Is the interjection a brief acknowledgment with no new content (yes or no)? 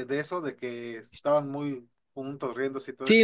no